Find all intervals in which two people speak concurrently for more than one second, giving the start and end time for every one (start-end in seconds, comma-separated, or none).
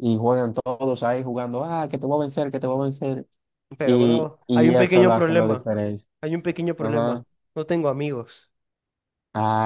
3.8-5.7